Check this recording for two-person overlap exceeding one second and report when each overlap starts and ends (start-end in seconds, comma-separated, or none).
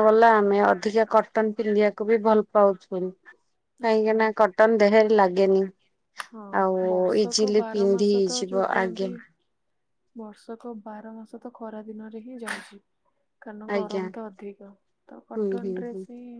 7.2-9.1